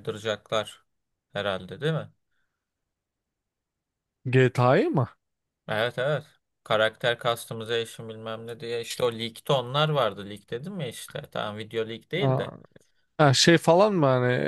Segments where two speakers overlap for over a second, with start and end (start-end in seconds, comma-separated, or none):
none